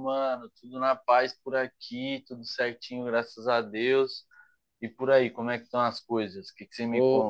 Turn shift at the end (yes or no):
yes